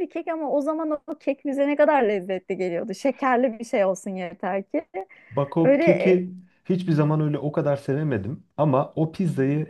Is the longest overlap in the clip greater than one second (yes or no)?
no